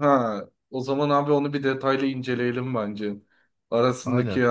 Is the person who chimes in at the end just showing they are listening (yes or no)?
yes